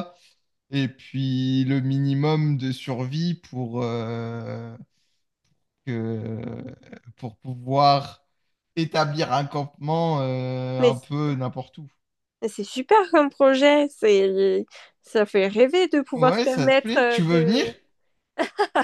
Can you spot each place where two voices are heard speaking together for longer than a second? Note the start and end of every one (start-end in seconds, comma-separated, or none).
16.1-17.6